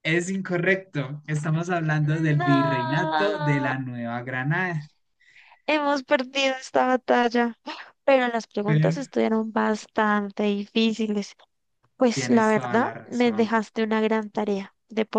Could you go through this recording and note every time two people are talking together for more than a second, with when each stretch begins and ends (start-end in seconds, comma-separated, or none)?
2.4-3.7, 12.1-13.6